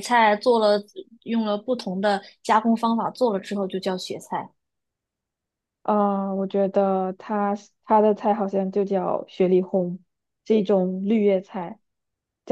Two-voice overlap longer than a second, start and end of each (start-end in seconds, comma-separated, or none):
none